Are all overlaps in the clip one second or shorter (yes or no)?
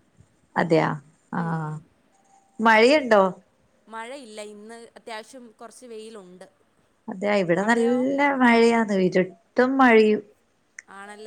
yes